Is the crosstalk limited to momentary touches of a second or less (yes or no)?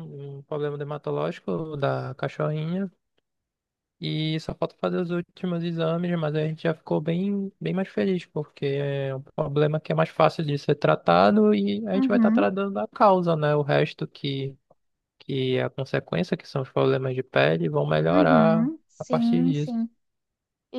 no